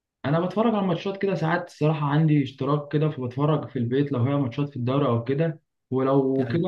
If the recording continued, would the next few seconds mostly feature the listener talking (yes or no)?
no